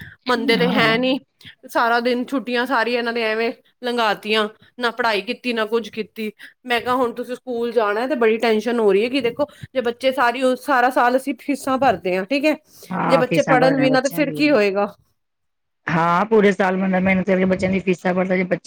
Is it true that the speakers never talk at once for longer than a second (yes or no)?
no